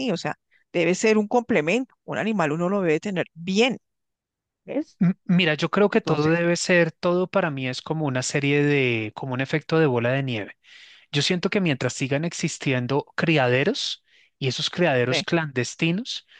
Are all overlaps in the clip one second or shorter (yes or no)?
yes